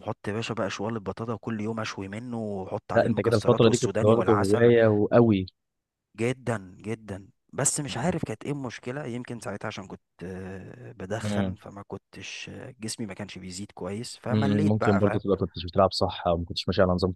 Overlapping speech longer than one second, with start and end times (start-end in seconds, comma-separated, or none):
2.9-4.7